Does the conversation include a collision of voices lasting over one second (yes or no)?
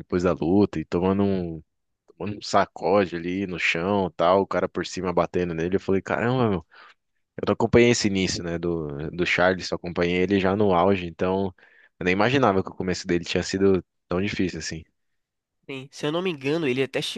no